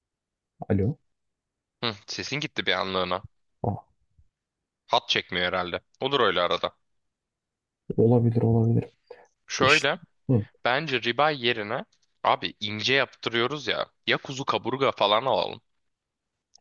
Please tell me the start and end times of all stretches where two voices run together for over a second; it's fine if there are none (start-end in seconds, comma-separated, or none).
none